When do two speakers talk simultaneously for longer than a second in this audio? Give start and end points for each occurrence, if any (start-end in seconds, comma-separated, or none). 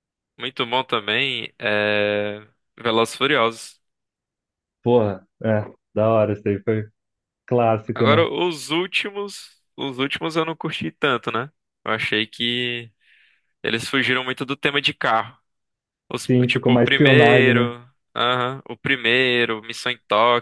16.3-17.7